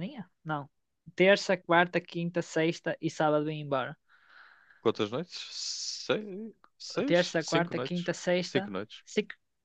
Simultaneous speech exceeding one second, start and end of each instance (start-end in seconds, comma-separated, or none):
7.0-9.0